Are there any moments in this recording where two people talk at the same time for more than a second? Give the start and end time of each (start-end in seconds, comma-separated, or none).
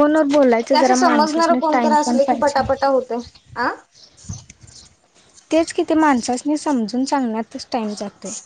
0.7-2.6